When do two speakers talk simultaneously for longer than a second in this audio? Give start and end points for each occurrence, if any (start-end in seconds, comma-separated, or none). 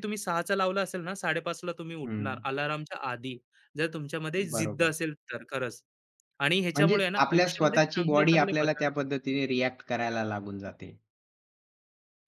6.7-8.8